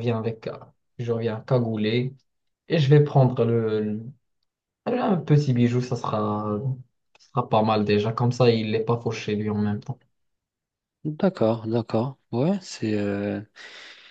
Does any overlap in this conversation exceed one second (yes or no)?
no